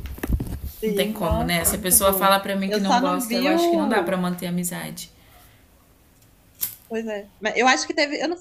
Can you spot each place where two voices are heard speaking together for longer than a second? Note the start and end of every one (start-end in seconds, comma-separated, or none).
0.8-4.2